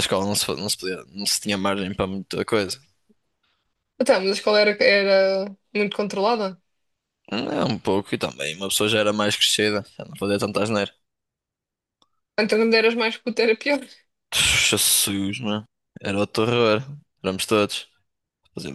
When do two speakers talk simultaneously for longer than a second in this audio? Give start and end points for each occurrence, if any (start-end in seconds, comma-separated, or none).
none